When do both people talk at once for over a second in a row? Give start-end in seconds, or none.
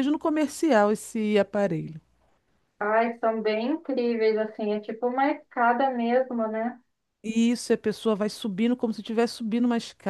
none